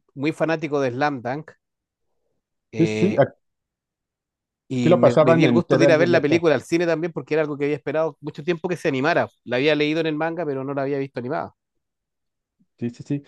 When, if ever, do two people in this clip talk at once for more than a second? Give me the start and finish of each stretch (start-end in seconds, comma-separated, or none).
4.8-6.4